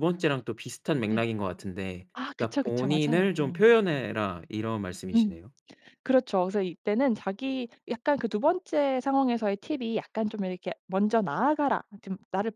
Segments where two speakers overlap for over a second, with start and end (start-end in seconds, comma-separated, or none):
2.1-3.7